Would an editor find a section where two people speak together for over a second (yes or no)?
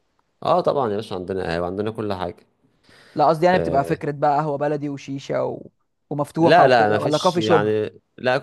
yes